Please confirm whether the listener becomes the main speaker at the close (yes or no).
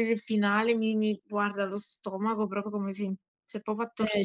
yes